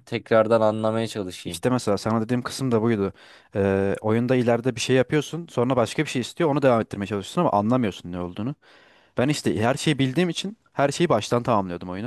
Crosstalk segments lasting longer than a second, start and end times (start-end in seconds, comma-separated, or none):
none